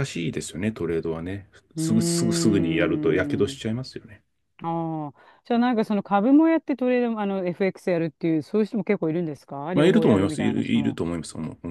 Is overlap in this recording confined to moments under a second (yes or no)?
no